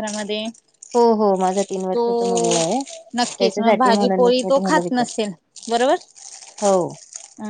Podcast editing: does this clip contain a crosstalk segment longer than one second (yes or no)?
yes